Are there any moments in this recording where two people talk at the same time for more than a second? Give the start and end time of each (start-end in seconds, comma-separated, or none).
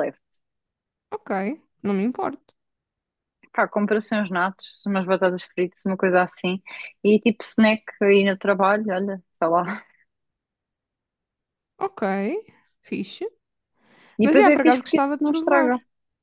14.2-15.7